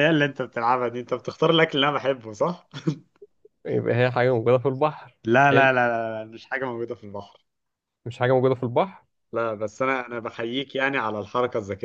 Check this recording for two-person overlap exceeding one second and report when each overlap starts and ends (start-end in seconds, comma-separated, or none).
none